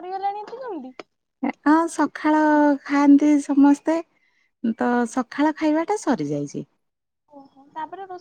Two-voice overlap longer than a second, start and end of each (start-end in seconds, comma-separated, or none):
none